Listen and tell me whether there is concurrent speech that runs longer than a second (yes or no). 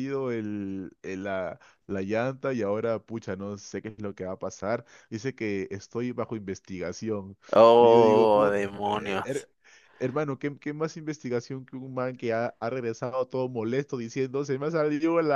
yes